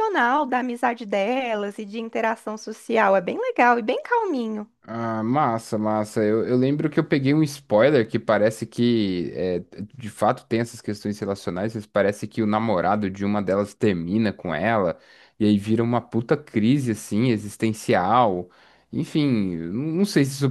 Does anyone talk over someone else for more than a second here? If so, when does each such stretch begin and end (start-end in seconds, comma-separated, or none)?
none